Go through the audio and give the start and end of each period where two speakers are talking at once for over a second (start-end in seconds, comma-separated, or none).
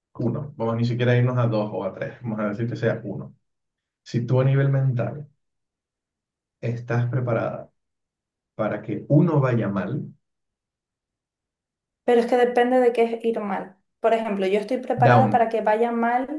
none